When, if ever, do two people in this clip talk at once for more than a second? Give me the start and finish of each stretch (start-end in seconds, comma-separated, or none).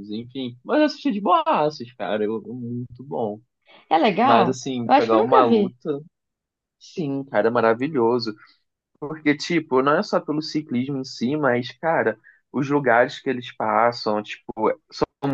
4.2-5.7